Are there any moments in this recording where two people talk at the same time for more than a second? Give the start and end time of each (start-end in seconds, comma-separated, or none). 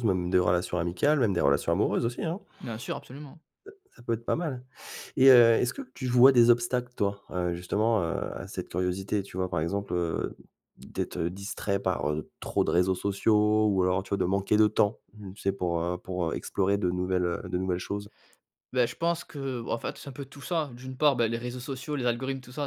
none